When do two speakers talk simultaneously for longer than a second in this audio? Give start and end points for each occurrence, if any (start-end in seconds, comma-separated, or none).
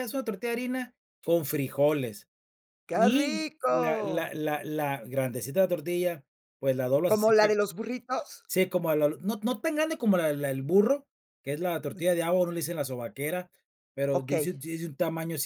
2.9-4.3